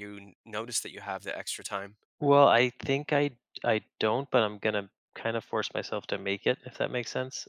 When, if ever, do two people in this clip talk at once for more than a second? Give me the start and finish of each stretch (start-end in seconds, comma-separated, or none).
none